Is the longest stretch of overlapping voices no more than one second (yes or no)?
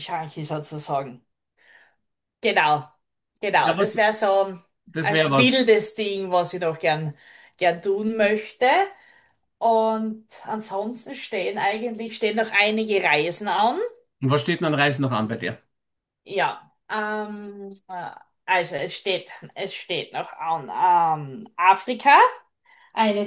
yes